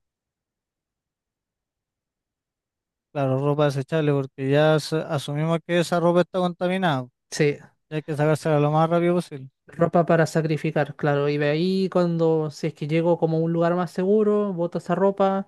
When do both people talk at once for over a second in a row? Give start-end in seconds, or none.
none